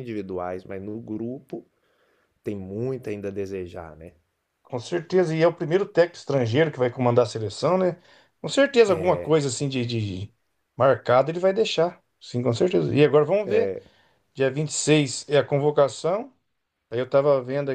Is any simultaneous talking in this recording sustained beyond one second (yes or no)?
no